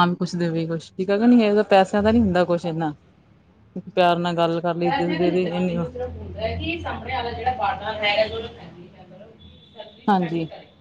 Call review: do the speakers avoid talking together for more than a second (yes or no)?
yes